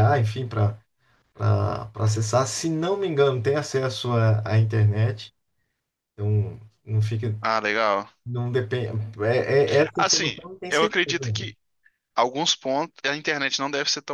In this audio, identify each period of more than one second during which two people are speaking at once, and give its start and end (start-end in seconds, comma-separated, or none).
9.9-11.5